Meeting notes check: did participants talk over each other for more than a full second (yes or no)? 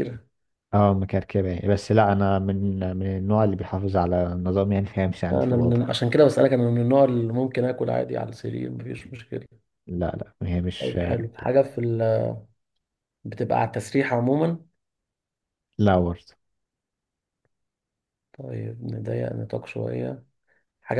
no